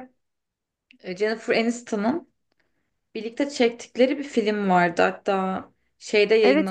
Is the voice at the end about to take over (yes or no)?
yes